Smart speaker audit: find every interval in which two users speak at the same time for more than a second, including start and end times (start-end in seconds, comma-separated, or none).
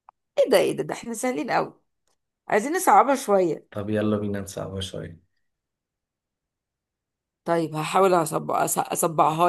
none